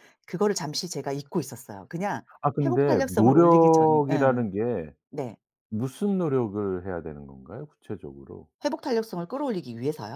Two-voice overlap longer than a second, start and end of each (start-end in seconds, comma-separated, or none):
2.6-4.5